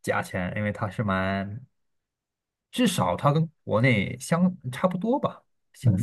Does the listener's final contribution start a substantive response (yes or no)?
yes